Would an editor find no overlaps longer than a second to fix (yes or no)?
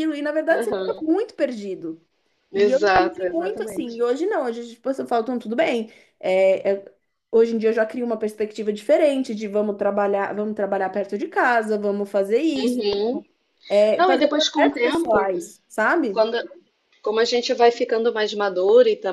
no